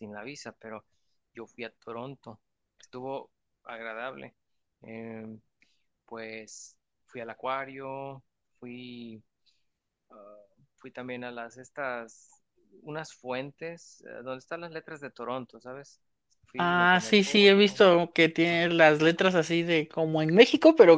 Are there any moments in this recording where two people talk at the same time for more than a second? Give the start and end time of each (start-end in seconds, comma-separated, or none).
16.6-17.8